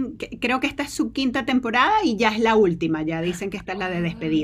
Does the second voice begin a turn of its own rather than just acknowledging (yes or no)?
yes